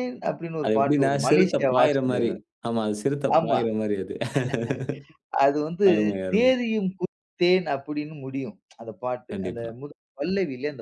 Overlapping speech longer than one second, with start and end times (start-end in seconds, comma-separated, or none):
0.6-2.3